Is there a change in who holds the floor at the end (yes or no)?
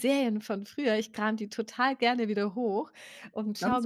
no